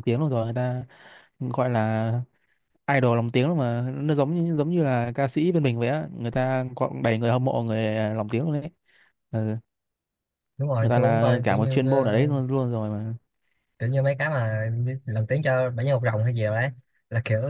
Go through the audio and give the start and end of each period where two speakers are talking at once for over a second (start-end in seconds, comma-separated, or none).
10.8-12.3